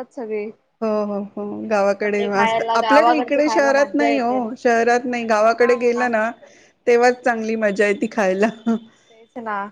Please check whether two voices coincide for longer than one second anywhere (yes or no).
yes